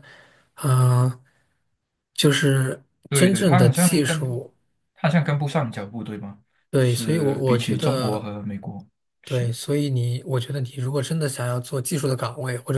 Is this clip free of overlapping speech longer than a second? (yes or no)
no